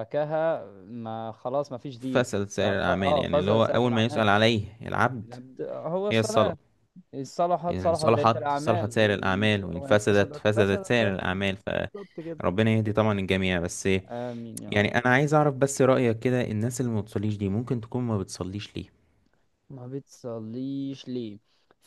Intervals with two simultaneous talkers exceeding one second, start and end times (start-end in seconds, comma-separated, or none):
2.0-4.2, 7.7-11.5